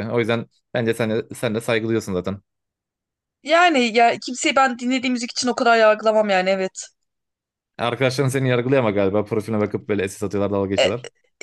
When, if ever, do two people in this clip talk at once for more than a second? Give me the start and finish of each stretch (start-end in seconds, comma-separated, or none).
none